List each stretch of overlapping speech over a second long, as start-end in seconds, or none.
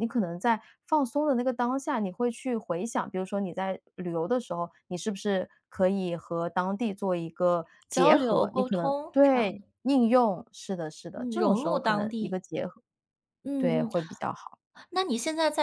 7.9-9.6, 11.1-12.4